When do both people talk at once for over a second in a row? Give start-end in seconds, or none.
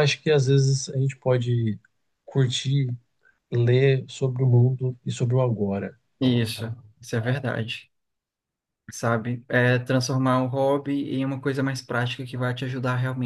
none